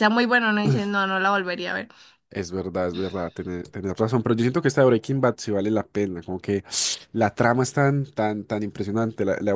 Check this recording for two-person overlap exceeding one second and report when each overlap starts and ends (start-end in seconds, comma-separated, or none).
none